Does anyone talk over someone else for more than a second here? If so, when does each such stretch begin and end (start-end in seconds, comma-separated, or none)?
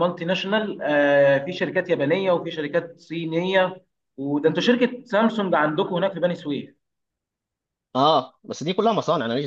none